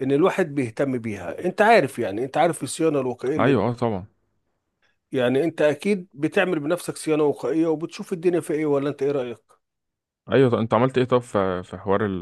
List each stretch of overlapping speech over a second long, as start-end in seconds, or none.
none